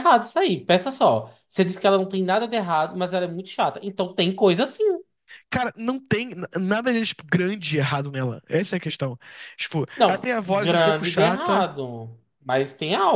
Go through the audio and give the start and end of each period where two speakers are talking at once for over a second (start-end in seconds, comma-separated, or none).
10.0-11.7